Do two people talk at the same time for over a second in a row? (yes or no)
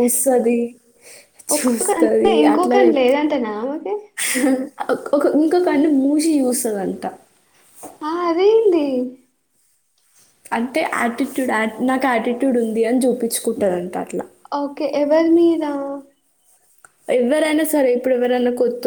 yes